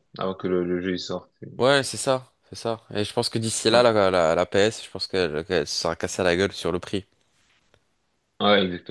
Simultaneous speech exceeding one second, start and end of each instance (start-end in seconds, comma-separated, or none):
none